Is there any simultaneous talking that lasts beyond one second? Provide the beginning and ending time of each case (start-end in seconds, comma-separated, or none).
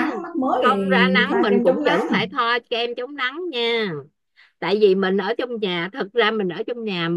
0.6-2.0